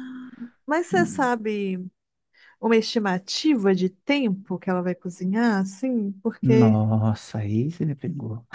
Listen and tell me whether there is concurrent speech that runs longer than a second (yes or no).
no